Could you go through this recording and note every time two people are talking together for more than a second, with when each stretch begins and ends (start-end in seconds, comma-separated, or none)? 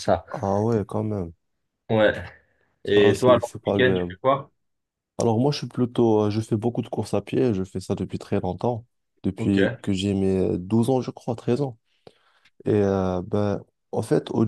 2.9-4.1